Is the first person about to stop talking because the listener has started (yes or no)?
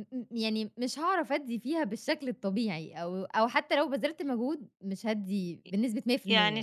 yes